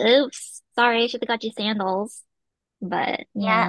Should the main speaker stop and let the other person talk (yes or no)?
yes